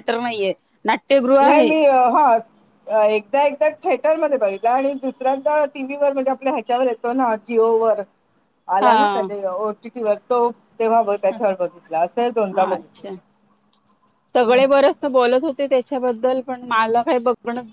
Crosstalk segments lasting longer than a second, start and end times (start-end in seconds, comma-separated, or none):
none